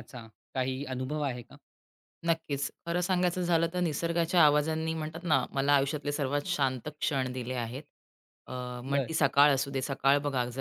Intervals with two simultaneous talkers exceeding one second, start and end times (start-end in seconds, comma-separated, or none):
none